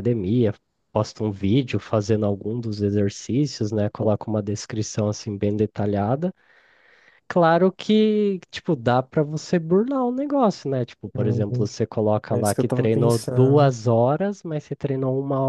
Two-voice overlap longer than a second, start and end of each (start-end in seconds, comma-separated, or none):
12.3-13.7